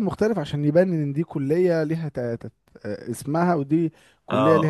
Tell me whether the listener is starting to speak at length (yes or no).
yes